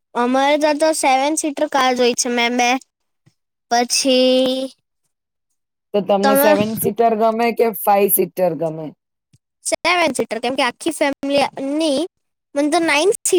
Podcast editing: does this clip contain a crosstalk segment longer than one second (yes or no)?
no